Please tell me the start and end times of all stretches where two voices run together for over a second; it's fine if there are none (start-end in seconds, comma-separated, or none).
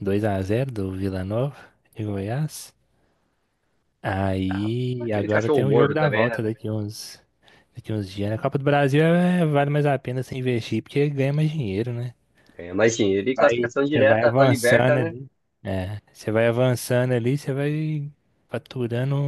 4.5-6.5, 13.2-15.1